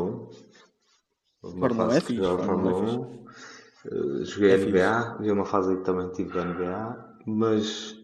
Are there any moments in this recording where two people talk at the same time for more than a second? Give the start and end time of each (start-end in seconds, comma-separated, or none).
1.6-3.0